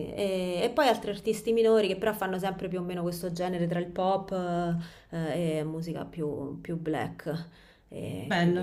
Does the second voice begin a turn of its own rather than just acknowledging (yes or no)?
yes